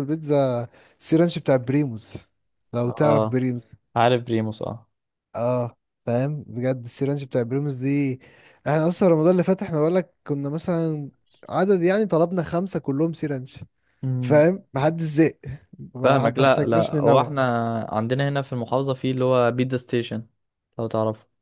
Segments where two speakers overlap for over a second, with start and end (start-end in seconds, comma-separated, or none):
16.0-17.4